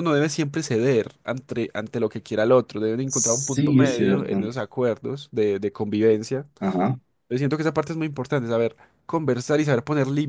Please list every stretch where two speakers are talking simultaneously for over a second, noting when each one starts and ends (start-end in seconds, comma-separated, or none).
3.0-4.4